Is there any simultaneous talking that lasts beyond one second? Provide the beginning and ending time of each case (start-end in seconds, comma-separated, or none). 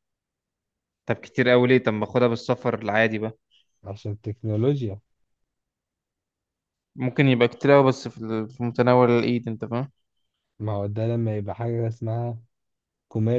none